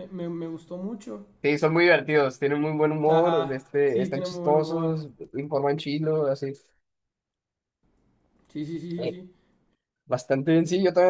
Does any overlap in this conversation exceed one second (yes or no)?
yes